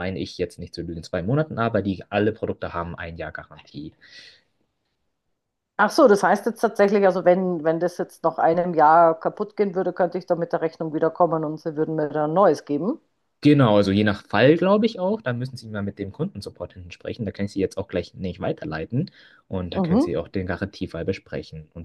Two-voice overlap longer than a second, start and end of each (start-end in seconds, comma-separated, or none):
none